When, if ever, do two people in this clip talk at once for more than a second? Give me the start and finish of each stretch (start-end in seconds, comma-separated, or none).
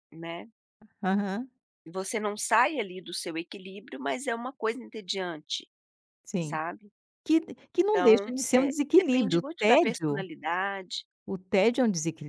7.9-10.2